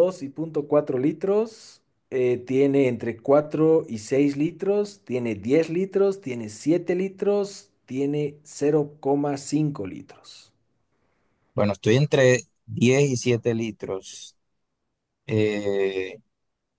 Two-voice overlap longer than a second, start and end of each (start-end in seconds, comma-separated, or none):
none